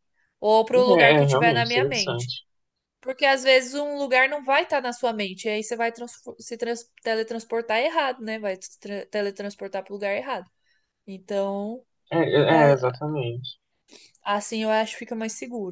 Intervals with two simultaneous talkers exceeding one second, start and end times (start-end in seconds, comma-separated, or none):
1.0-2.3